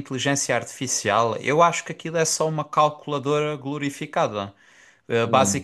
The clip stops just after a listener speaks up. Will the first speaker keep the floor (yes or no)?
yes